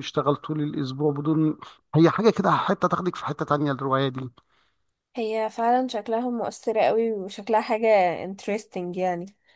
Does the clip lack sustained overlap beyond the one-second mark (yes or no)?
yes